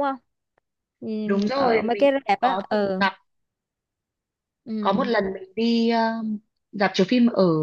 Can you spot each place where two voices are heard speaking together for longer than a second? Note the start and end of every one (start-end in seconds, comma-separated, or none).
1.2-3.0